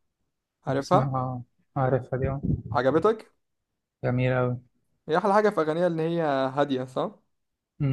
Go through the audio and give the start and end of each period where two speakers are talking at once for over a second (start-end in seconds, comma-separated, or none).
none